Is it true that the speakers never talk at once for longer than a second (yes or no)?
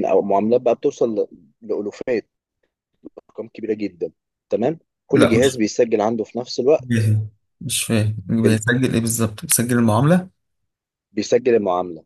yes